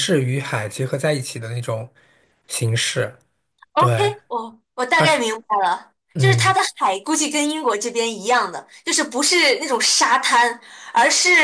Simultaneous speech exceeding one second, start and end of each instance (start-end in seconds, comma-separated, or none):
none